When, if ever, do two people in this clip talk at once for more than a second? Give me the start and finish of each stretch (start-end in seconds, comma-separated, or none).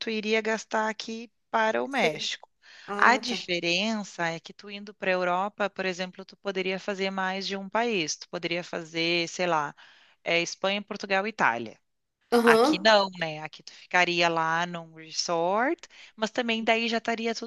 none